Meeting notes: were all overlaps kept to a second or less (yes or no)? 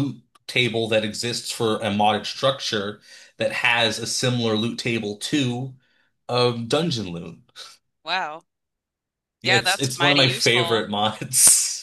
no